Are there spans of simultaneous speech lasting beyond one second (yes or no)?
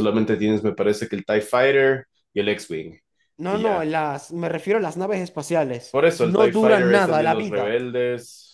yes